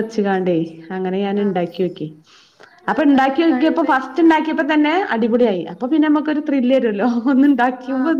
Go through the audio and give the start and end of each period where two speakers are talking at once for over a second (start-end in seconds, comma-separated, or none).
3.0-4.4